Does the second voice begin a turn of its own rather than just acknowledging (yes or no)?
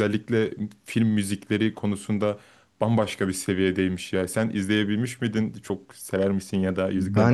yes